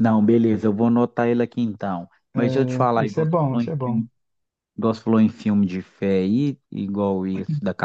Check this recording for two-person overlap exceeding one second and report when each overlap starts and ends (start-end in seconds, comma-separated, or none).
2.3-4.0